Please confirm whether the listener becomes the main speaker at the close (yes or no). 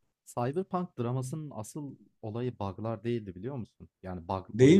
no